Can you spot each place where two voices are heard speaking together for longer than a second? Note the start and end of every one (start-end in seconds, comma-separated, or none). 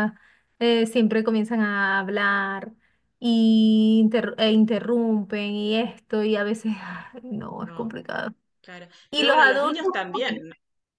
9.1-10.4